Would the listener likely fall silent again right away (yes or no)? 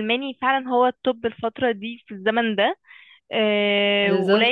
yes